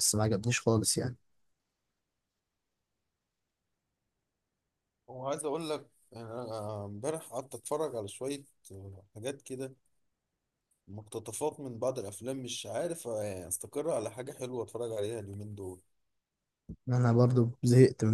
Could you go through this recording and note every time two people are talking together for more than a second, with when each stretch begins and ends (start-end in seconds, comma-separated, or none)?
none